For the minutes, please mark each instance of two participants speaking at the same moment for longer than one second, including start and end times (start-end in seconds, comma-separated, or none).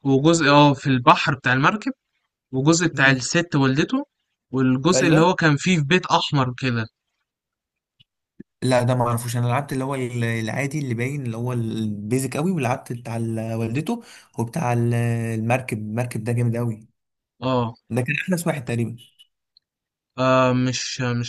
none